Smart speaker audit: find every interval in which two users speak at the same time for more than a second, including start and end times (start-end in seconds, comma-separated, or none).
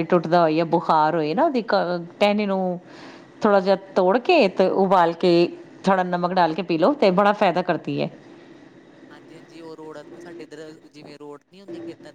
none